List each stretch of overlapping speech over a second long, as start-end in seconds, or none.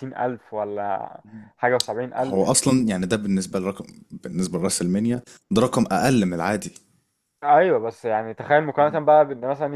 none